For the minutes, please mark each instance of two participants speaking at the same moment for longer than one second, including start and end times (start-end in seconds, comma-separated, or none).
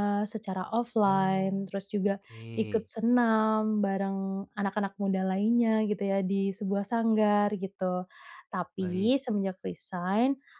1.1-2.9